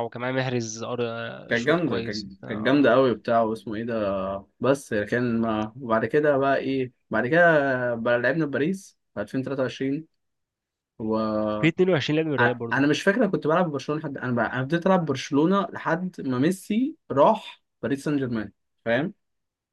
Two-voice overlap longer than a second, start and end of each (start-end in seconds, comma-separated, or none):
1.5-2.9